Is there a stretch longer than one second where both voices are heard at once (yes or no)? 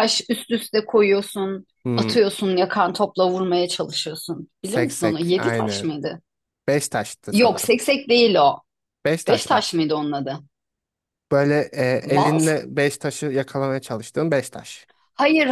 yes